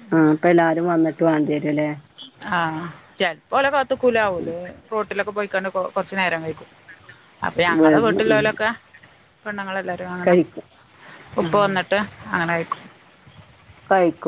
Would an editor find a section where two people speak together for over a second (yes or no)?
no